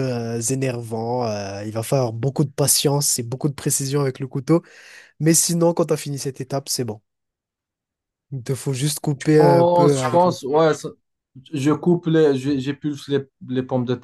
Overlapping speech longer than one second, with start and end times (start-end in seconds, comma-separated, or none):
9.2-10.6